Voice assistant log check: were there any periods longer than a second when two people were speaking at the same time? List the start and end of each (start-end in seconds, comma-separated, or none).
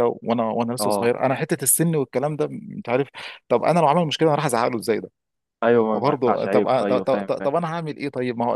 5.9-7.5